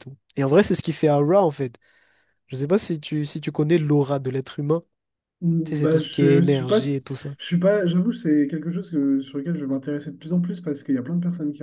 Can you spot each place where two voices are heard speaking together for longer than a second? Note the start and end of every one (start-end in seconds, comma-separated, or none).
5.6-6.9